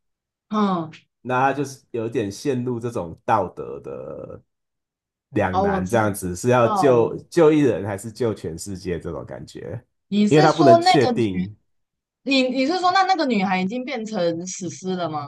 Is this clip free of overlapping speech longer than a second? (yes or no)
no